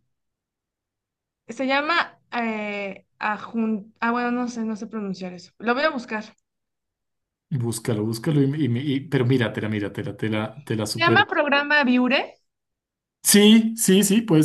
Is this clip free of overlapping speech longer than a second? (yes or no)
yes